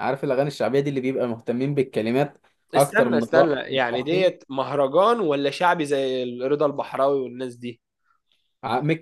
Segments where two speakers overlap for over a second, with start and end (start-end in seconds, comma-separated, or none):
2.8-4.4